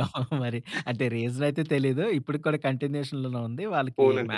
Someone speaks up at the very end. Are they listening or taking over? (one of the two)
listening